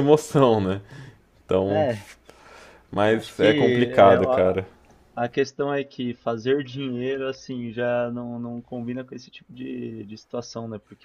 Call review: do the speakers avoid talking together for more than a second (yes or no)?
no